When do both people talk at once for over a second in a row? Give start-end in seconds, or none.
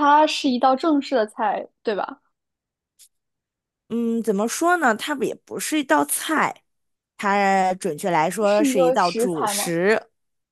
8.4-9.7